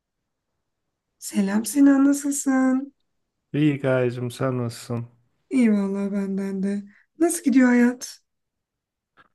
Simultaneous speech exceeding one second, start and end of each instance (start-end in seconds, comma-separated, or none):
none